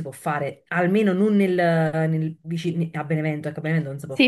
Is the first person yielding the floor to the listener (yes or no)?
yes